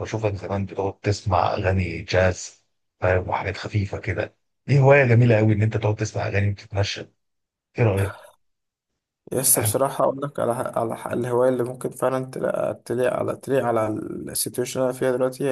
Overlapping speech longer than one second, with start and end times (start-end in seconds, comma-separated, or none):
none